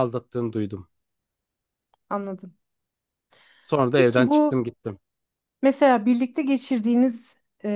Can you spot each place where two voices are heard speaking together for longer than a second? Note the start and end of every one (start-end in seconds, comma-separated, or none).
none